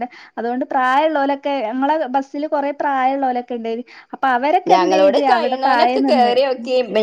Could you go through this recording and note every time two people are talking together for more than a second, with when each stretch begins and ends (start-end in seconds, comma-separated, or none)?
4.7-6.3